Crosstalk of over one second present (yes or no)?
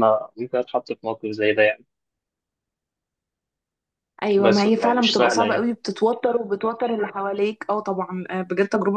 yes